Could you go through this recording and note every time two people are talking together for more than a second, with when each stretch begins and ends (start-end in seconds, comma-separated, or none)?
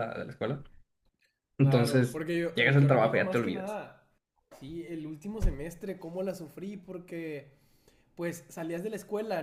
1.6-3.8